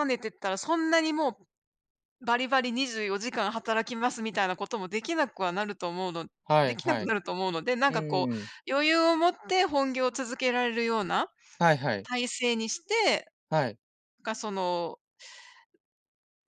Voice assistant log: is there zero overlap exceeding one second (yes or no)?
yes